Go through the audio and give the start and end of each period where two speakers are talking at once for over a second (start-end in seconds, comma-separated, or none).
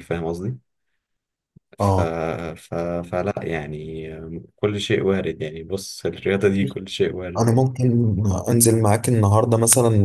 none